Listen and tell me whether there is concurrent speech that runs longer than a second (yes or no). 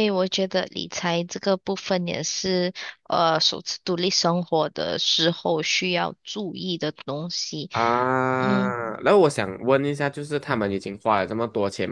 no